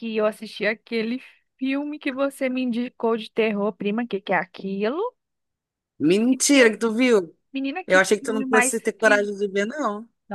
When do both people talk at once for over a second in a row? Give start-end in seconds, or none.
7.9-9.2